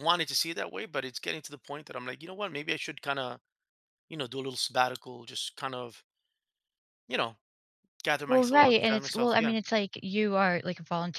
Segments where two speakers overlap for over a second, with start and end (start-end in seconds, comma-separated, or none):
8.3-9.5